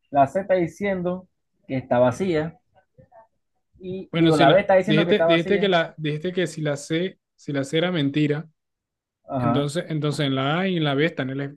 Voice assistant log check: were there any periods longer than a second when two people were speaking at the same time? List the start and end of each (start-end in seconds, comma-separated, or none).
4.1-5.7